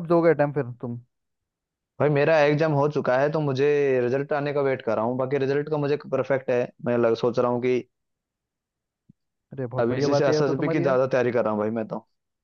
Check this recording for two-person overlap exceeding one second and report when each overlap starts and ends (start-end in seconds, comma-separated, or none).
9.8-11.0